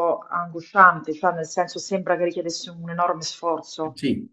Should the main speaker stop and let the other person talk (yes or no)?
yes